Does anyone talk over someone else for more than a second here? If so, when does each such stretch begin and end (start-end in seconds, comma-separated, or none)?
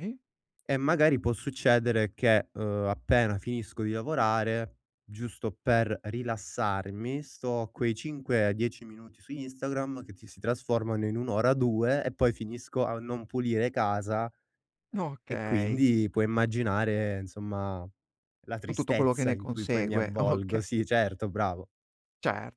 18.7-20.7